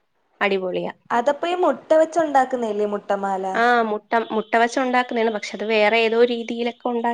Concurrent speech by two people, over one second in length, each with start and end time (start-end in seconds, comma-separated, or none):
none